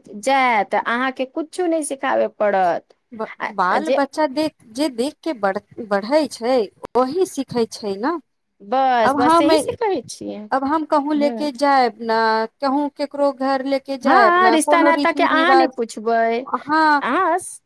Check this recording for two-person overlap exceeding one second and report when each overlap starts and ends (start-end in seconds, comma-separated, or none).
14.1-15.8